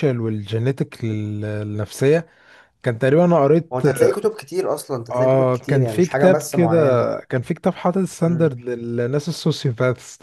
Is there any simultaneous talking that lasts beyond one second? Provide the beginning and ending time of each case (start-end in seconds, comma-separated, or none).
5.1-6.8